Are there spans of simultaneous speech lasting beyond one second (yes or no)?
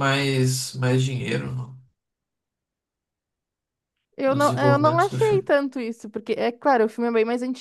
yes